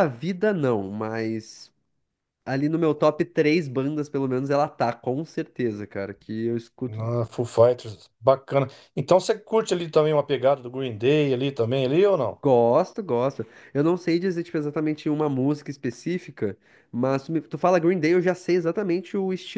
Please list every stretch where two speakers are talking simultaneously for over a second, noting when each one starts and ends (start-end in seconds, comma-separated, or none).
none